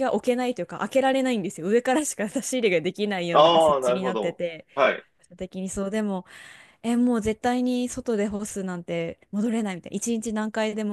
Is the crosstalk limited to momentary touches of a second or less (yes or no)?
no